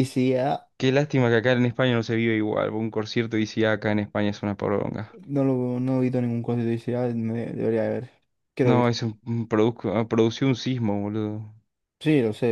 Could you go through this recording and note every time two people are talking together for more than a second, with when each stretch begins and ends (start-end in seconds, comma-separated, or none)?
none